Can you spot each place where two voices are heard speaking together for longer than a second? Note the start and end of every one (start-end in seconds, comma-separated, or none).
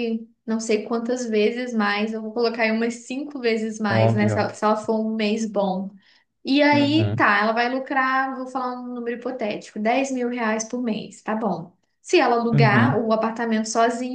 none